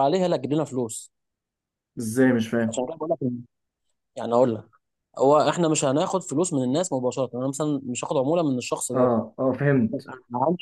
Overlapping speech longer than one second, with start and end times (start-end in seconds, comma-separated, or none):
none